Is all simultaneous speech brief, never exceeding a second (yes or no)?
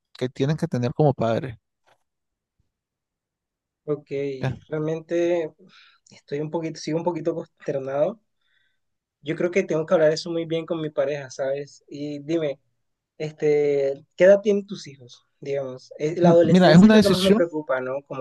no